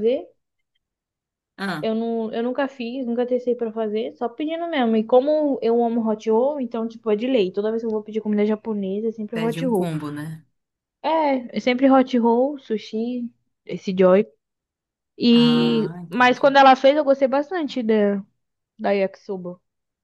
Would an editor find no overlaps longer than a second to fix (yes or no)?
no